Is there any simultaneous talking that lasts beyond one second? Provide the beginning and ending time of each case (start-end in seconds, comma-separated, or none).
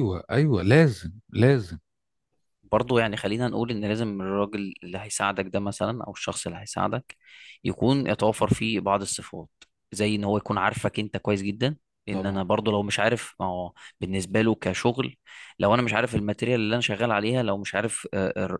none